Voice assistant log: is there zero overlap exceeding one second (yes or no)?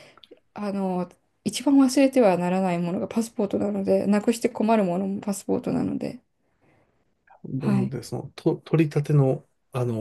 yes